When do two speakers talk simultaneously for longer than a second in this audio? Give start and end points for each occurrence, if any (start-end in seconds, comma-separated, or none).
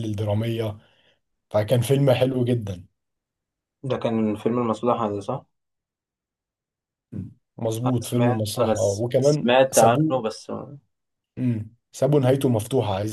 7.8-10.1